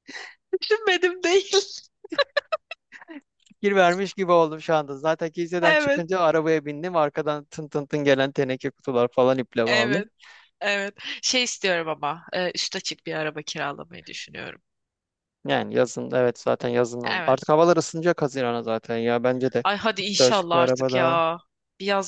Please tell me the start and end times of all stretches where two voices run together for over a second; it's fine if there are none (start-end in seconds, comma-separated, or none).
19.6-21.2